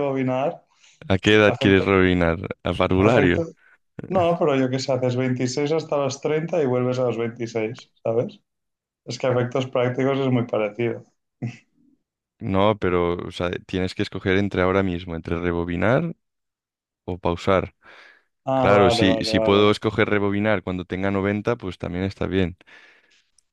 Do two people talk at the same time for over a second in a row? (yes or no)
yes